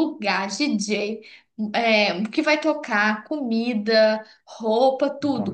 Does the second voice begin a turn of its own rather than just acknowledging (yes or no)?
no